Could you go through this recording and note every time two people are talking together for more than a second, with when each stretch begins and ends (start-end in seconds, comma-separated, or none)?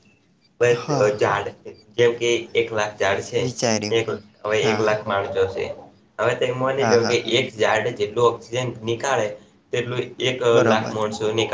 none